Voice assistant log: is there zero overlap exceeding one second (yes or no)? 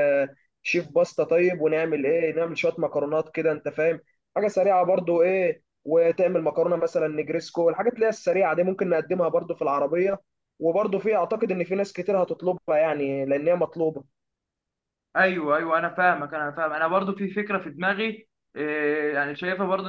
yes